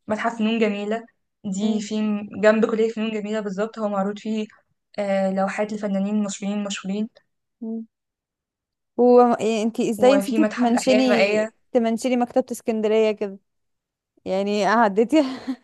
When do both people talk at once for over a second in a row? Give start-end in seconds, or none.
10.0-11.2